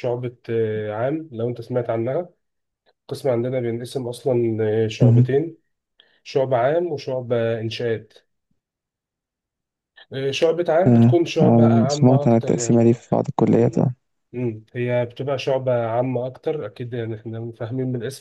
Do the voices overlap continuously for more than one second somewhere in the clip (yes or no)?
yes